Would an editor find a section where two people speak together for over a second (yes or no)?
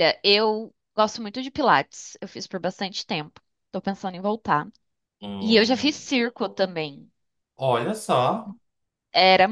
no